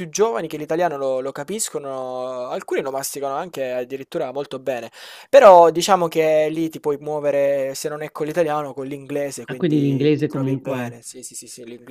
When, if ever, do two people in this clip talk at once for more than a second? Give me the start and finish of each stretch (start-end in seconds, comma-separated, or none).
9.5-11.0